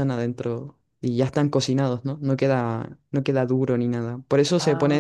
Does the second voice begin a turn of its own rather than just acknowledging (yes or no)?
no